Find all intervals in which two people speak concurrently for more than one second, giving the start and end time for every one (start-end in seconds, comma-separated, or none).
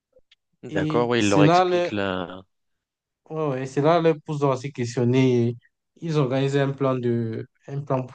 0.7-1.9